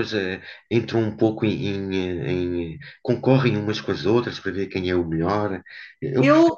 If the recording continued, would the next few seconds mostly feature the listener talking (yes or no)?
no